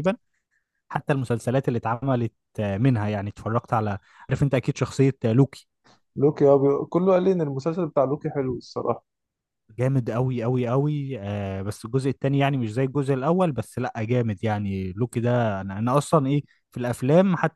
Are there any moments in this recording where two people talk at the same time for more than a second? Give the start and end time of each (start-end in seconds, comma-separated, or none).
none